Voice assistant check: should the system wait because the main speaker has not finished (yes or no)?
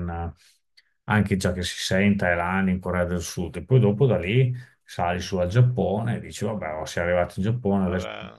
yes